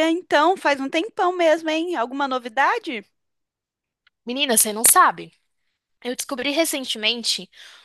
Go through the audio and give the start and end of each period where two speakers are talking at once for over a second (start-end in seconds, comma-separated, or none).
none